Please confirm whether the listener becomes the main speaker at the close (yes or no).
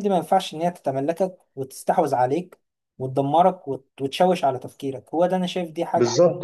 yes